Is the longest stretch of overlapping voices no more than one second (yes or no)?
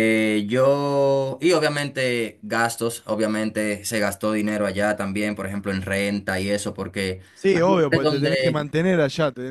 no